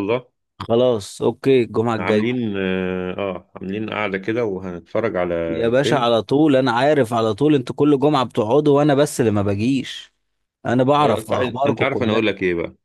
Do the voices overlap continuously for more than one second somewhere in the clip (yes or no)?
yes